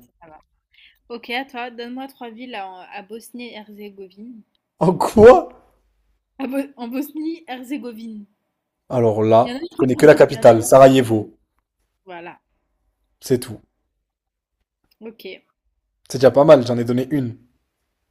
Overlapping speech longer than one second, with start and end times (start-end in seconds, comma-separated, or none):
9.4-10.7